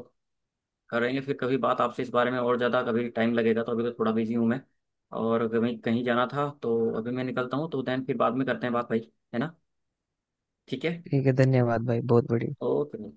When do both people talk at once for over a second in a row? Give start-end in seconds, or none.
none